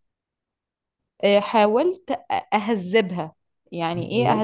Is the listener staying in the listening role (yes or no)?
yes